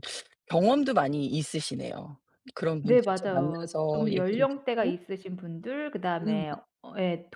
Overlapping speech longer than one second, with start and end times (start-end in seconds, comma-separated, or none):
2.8-5.0